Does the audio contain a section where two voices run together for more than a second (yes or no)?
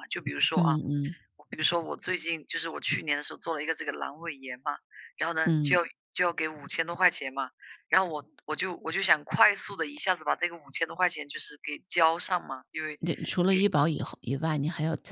no